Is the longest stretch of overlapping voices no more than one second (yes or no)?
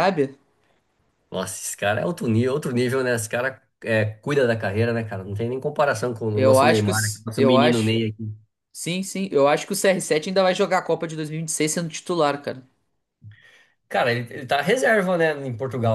no